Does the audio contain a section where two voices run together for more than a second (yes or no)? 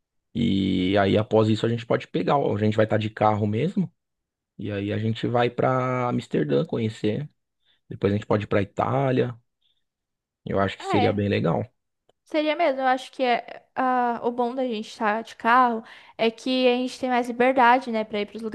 no